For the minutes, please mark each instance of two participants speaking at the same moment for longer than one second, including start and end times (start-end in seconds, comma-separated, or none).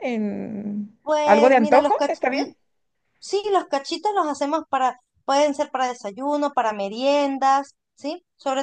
1.0-2.5